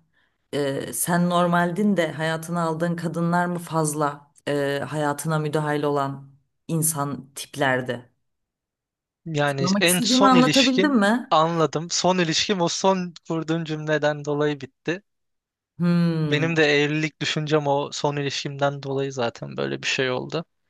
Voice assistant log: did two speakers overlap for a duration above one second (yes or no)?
yes